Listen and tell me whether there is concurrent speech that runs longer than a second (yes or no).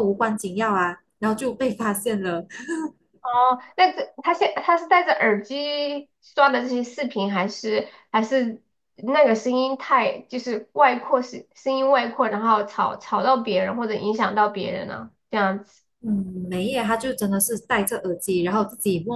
no